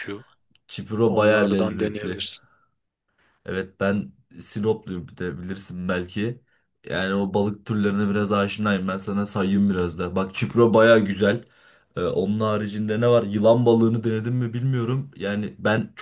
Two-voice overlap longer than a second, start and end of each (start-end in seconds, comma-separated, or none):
1.0-2.3